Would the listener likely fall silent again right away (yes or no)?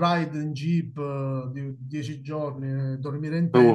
yes